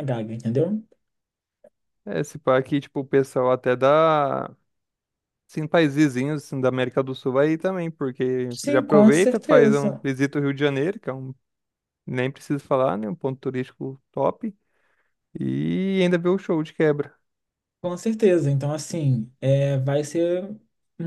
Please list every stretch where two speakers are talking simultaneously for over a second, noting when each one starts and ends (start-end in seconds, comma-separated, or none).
8.5-10.0